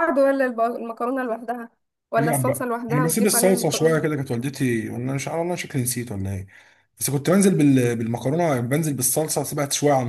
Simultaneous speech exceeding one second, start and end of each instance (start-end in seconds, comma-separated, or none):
2.2-4.2